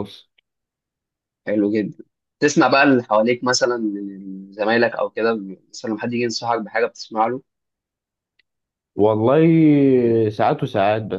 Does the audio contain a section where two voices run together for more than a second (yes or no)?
no